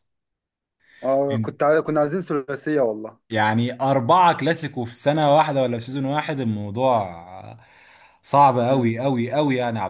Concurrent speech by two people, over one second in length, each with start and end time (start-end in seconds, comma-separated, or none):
none